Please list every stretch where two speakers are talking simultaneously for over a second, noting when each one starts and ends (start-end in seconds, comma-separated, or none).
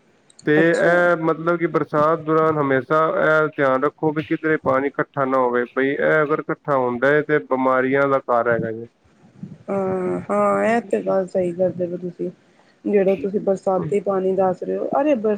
none